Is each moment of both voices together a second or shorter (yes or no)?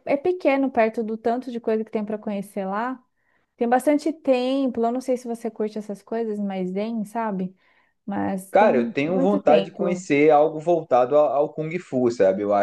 no